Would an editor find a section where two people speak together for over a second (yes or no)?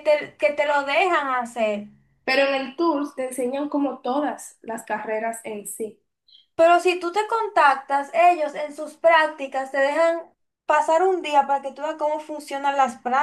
no